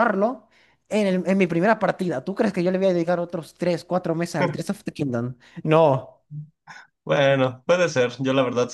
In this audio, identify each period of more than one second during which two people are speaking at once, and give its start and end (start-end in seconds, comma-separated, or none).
none